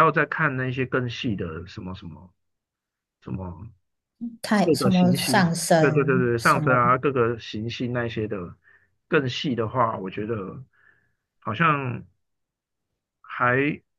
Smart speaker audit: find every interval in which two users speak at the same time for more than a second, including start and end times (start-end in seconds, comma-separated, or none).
4.6-6.9